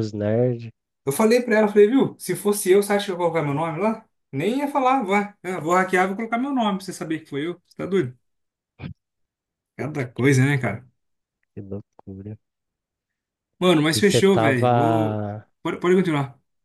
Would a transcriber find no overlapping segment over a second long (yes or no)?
no